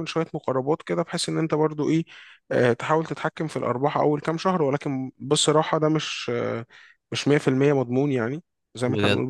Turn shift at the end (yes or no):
no